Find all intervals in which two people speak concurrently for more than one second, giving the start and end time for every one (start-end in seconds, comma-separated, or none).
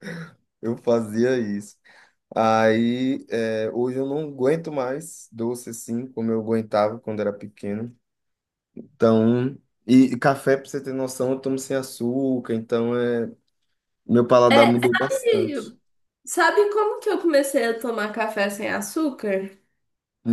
14.5-15.7